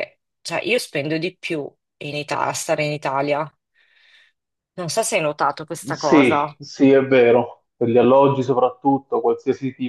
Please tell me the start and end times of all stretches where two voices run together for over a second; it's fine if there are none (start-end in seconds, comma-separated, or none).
none